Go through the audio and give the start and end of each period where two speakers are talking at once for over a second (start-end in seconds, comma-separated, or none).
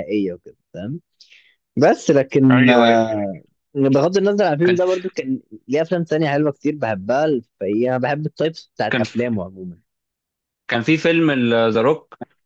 none